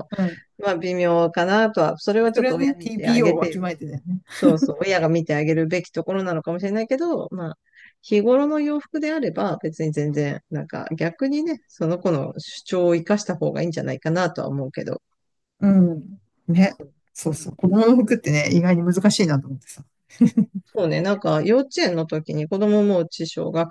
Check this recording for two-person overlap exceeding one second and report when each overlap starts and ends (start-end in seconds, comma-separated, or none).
2.3-3.7